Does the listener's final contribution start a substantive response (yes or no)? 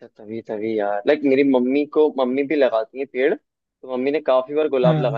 no